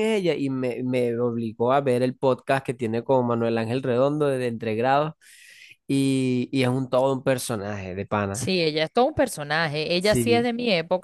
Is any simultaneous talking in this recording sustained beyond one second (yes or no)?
no